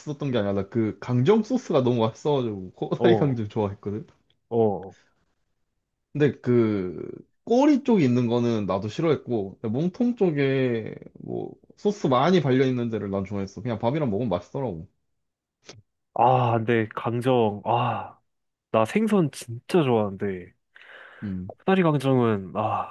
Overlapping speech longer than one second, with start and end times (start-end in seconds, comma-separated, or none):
none